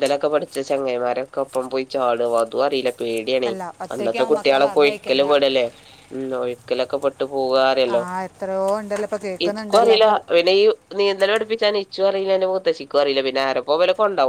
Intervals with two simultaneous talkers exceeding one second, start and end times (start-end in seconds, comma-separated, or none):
3.9-5.3